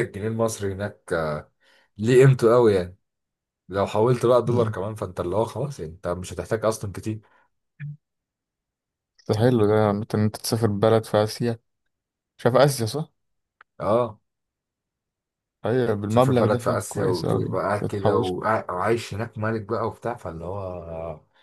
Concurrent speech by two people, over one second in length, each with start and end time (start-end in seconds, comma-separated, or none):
16.1-18.3